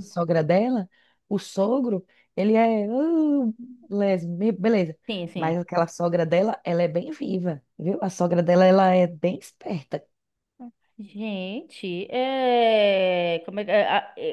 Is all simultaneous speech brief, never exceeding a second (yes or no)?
yes